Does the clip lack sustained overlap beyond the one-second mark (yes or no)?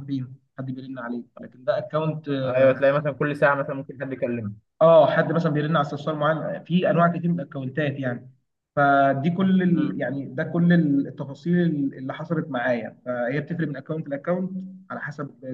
yes